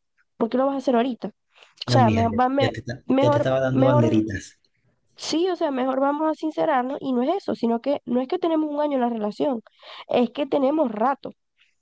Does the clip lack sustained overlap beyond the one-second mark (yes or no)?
no